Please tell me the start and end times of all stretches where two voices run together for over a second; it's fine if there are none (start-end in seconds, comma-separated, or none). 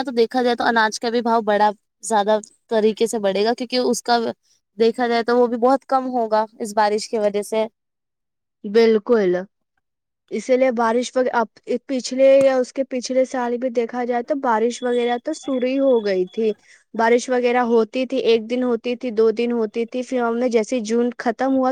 none